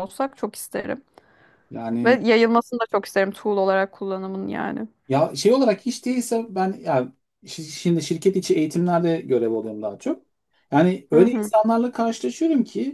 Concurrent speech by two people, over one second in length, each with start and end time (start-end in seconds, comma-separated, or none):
none